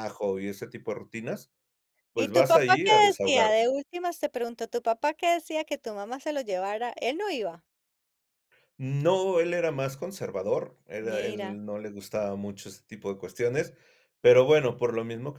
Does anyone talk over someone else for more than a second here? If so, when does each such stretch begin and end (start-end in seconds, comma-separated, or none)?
2.2-3.7